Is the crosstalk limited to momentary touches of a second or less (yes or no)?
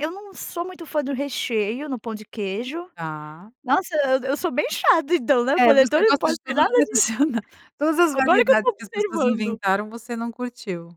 no